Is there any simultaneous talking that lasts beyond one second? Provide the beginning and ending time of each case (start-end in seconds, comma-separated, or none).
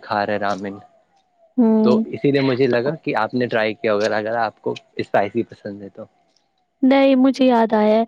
none